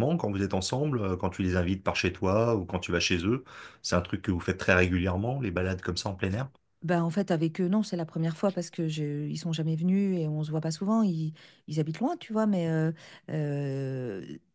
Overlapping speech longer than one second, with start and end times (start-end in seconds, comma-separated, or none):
none